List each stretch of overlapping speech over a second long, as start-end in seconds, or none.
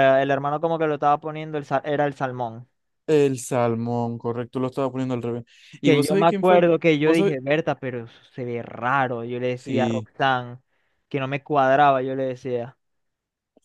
5.8-7.4